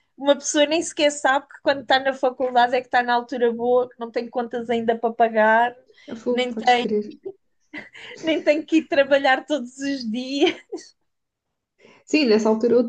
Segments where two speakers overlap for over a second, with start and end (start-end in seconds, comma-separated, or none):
none